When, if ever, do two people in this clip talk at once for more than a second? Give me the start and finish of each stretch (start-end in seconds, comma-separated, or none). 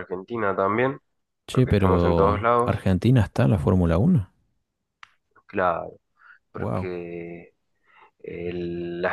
1.5-2.8